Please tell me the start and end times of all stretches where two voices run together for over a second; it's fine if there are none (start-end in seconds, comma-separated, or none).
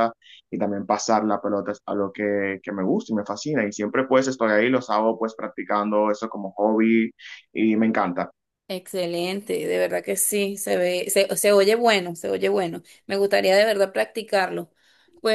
none